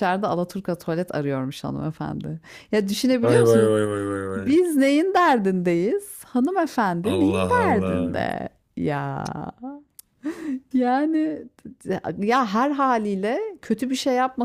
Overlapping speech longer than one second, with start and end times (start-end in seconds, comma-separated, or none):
7.0-8.2